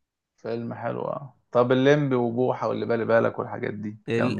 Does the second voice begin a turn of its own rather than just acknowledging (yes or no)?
yes